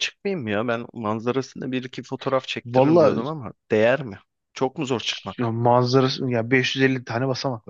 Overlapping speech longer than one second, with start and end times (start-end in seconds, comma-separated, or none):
none